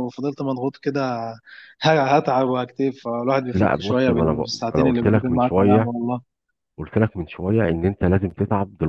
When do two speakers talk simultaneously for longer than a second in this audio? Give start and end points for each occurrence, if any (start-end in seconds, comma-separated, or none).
3.5-5.9